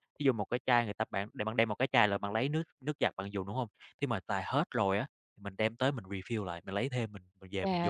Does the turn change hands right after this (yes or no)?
yes